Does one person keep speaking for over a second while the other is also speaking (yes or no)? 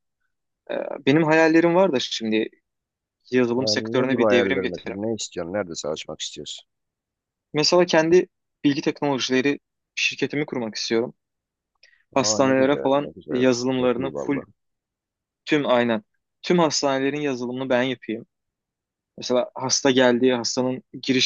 yes